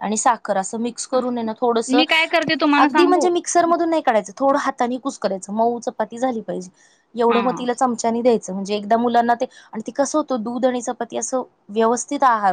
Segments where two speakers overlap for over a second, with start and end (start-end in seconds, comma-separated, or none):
none